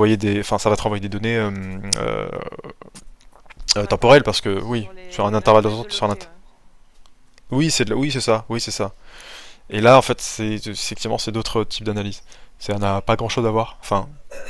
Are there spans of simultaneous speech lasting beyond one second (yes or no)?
yes